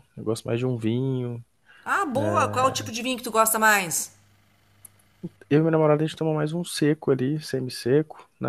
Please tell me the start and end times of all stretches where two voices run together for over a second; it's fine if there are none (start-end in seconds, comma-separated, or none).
none